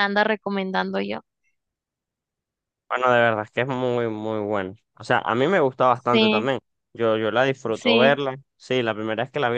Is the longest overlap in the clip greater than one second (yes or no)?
no